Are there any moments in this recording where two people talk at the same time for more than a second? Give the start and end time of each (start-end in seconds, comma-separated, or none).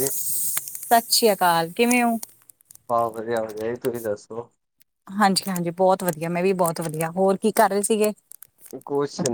none